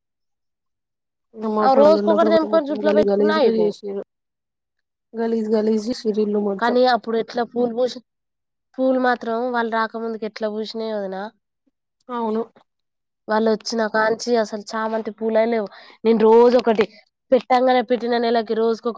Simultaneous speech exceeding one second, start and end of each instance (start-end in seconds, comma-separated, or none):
1.6-3.7